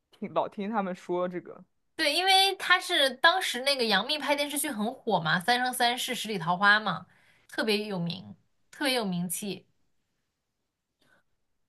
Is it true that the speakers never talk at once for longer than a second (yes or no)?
yes